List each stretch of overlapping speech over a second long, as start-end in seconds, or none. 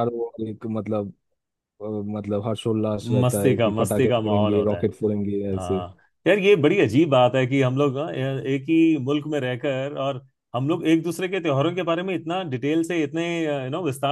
3.2-4.9